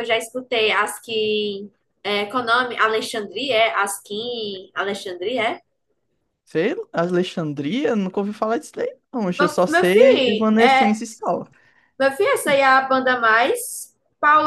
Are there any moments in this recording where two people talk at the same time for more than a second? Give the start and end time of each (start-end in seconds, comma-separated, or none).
9.4-10.9